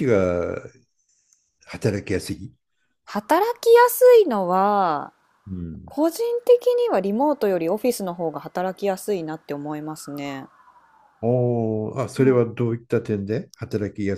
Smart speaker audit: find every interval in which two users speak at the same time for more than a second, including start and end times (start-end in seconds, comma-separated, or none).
none